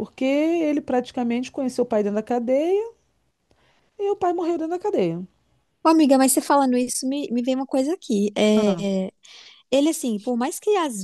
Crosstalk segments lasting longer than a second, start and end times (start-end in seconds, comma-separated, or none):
none